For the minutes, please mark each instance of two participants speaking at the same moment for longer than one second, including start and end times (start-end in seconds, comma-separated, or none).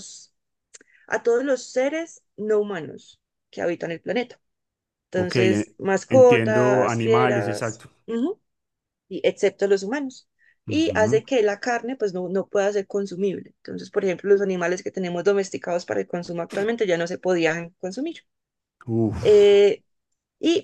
5.1-7.9